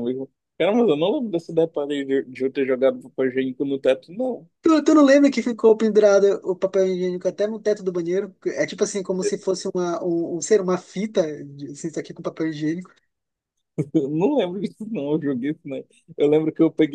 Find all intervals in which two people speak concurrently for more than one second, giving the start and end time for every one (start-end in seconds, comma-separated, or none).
none